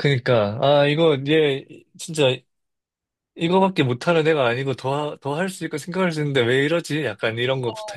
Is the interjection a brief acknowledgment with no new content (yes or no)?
no